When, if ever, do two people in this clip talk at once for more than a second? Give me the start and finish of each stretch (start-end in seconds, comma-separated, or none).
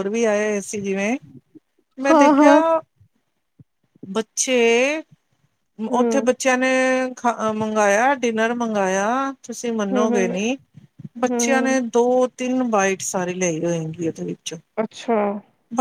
none